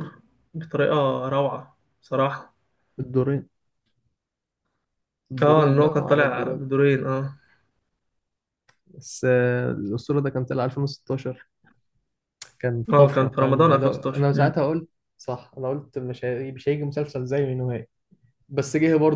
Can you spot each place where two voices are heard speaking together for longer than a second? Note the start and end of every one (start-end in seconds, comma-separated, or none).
5.4-6.6, 12.9-14.6